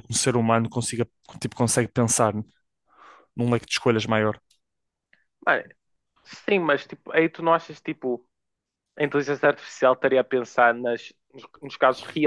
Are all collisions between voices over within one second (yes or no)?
yes